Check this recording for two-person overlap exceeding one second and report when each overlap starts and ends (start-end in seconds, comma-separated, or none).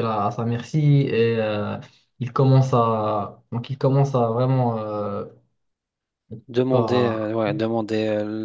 none